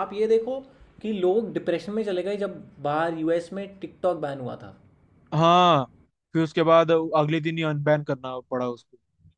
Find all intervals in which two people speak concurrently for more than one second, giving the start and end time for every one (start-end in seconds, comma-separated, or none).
none